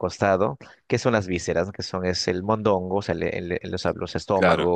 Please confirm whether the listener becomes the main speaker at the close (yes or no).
no